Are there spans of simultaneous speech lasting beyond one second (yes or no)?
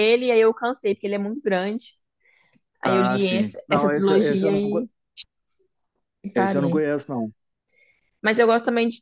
yes